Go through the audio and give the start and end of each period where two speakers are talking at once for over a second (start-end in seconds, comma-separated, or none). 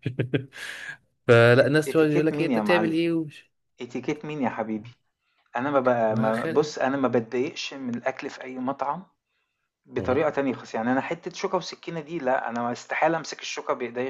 1.6-3.0